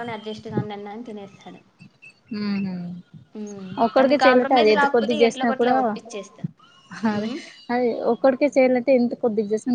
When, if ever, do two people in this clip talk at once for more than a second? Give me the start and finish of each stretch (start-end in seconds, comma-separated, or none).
3.9-5.7